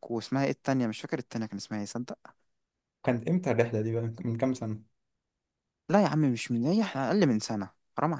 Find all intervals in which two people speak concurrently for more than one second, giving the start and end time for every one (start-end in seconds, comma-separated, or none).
none